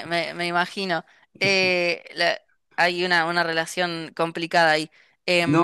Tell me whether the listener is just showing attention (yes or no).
no